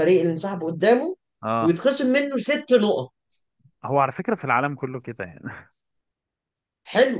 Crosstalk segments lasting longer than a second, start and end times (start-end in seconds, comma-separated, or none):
none